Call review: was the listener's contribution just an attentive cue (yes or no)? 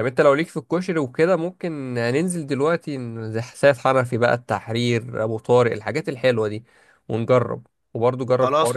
no